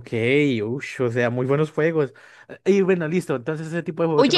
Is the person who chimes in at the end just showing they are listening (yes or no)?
no